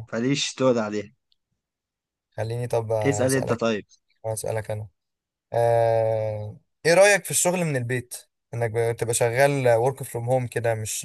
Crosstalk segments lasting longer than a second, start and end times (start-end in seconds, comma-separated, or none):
none